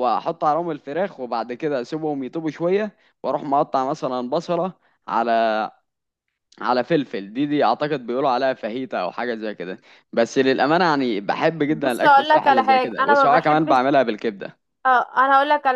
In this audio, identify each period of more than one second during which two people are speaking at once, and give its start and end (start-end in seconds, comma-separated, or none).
11.7-13.8